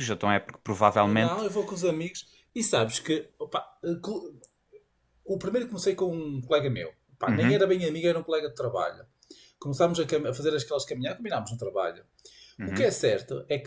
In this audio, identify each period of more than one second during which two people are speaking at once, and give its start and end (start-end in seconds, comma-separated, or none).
none